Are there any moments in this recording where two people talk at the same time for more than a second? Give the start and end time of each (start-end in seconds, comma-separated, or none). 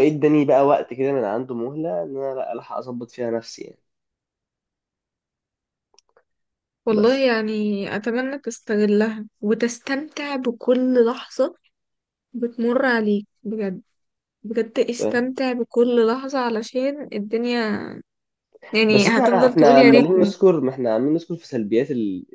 18.9-20.3